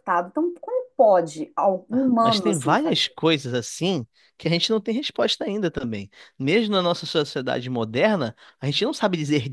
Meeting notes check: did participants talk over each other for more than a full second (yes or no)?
yes